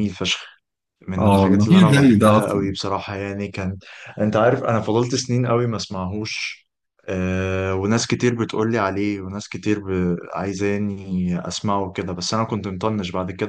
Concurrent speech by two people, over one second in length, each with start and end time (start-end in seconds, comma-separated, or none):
1.2-2.7